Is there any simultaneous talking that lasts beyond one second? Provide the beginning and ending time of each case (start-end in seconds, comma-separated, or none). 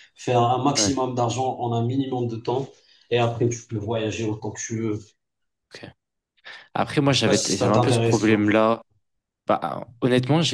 7.0-8.5